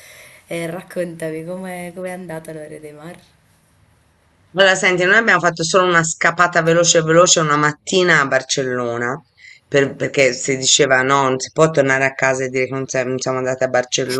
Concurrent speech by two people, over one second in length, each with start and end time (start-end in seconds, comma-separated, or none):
none